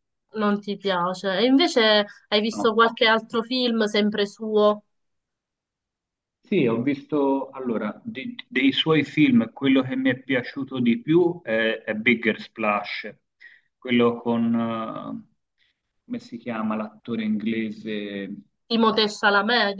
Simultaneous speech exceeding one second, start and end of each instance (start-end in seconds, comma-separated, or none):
none